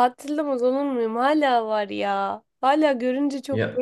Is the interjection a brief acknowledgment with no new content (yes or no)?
yes